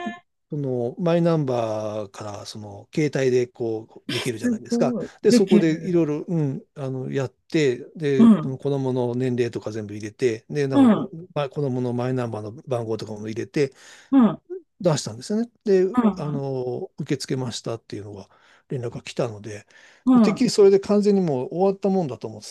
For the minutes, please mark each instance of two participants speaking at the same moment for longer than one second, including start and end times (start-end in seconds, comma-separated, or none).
4.1-6.1